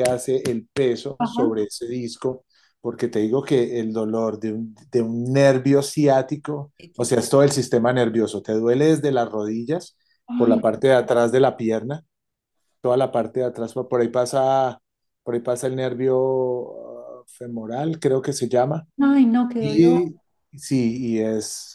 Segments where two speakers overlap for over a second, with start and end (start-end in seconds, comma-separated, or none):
none